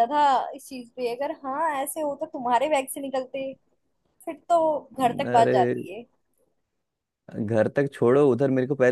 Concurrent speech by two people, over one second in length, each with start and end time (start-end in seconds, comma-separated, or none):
none